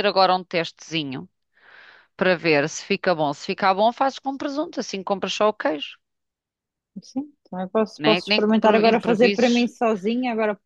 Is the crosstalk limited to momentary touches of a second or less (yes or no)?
no